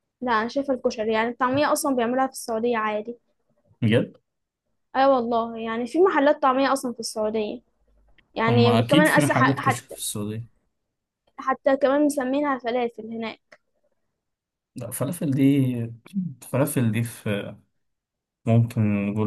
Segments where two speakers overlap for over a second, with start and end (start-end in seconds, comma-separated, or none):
8.5-9.9